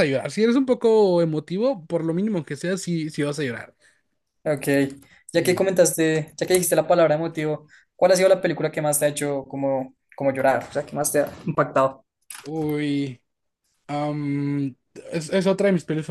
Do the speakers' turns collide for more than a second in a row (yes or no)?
no